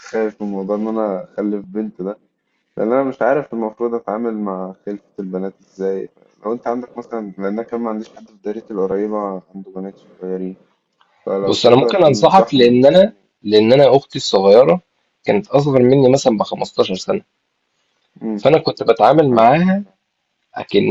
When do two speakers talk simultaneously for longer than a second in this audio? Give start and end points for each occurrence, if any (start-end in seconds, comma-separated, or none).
11.4-12.8